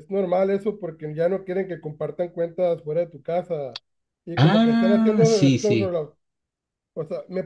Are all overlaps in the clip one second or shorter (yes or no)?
no